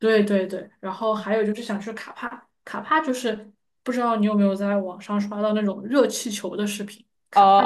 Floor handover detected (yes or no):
yes